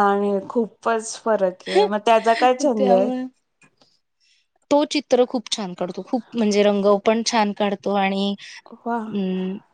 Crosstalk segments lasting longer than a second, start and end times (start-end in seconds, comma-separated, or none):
none